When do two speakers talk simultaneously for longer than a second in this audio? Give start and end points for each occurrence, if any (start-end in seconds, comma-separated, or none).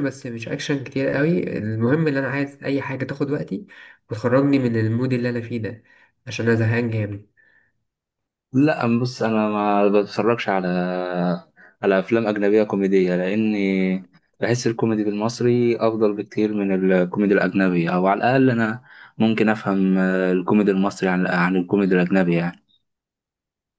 none